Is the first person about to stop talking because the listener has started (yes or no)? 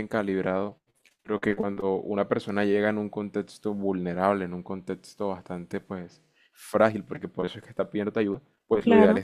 no